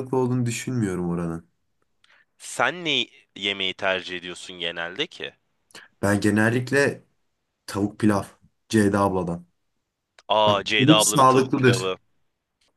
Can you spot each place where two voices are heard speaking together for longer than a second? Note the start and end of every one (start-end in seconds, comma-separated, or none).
10.5-11.9